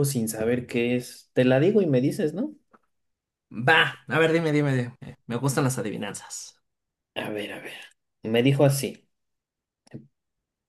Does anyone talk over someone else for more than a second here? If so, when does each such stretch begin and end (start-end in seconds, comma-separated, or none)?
none